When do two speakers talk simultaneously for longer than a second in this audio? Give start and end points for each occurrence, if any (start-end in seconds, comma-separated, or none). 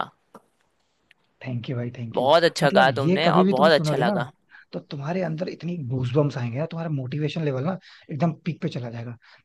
2.1-4.1